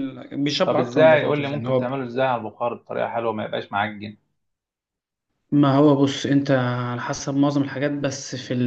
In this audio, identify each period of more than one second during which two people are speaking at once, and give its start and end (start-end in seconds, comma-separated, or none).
0.6-1.9